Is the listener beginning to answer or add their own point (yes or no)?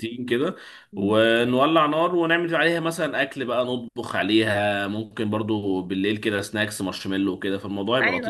yes